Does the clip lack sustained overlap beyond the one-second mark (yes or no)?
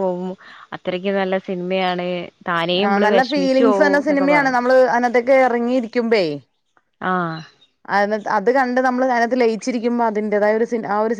no